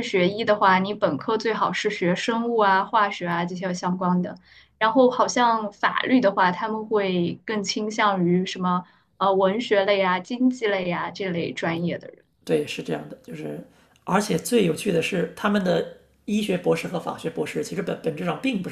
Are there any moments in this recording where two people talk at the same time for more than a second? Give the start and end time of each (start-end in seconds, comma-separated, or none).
none